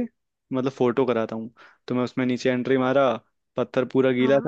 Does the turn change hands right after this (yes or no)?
no